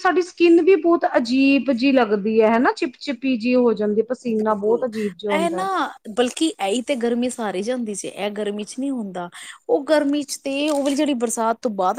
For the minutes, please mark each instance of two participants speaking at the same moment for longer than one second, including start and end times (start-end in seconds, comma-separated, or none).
none